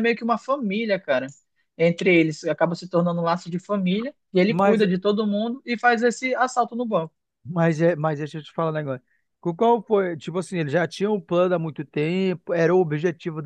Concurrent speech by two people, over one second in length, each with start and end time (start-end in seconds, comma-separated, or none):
none